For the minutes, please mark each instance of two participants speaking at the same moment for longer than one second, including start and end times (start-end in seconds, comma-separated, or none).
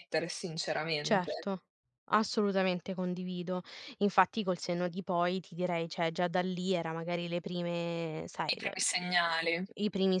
none